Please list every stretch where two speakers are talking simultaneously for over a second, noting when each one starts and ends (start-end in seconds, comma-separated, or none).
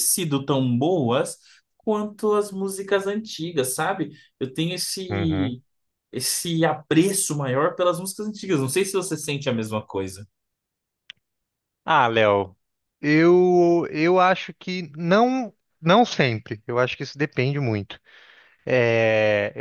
none